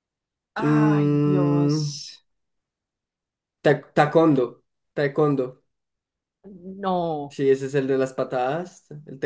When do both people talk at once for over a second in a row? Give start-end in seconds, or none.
0.6-1.9